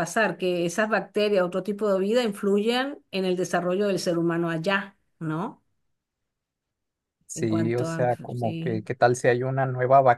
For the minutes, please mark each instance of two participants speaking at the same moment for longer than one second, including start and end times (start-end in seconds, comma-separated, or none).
7.3-8.9